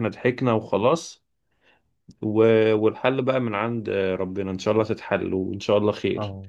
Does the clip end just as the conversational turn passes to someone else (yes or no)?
yes